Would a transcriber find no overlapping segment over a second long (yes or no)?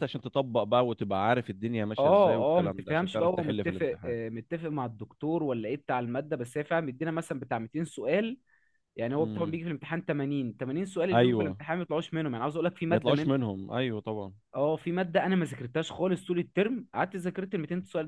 no